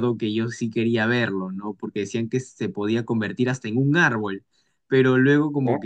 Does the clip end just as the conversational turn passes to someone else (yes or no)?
no